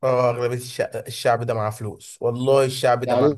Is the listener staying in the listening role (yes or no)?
no